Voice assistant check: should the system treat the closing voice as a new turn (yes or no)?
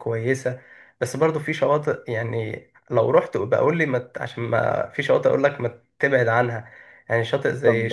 yes